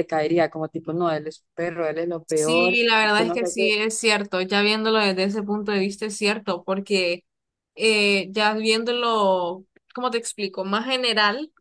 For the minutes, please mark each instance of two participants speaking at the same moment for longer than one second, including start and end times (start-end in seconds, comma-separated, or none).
2.2-3.7